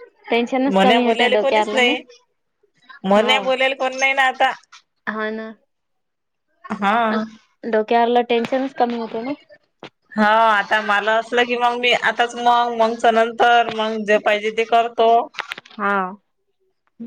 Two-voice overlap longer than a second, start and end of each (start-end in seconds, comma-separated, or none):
0.7-1.9